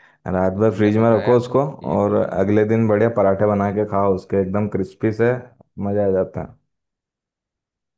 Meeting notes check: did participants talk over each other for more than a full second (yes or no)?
yes